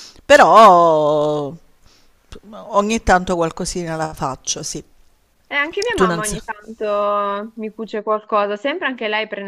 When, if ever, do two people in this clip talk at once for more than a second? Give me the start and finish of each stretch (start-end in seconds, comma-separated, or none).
none